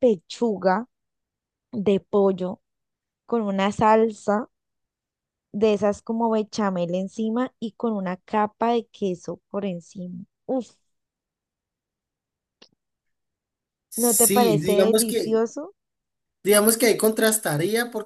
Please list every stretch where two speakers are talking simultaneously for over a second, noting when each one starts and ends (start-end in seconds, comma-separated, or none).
14.0-15.4